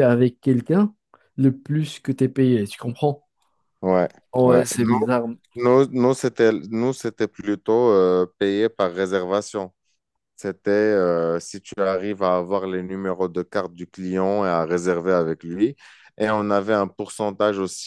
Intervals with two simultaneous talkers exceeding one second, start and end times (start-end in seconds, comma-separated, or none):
none